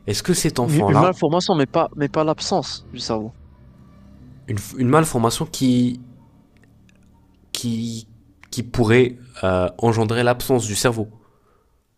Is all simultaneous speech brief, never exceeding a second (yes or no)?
yes